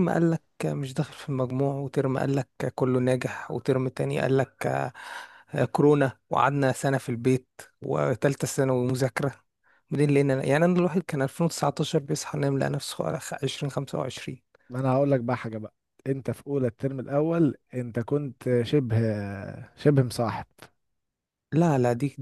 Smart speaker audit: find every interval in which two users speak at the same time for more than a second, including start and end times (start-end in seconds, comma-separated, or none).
none